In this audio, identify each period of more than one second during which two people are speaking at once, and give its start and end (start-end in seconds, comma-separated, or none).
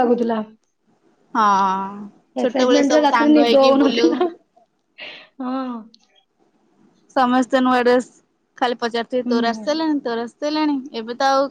2.4-4.1